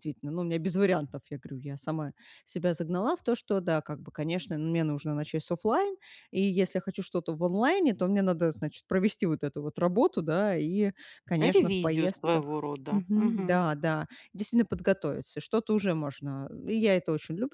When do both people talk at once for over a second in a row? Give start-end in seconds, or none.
11.4-13.6